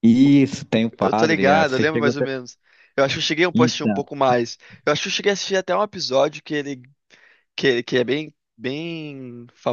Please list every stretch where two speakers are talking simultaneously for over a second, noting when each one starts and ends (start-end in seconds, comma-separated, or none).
1.0-2.3